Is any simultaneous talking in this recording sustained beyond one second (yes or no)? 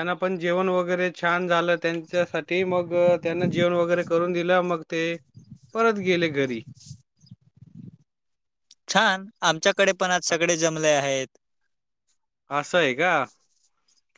no